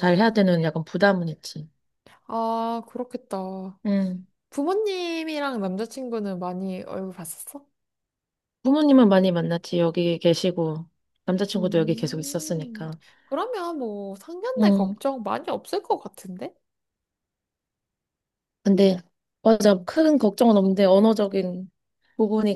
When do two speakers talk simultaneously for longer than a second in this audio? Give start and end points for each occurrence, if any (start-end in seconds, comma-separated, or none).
11.6-12.9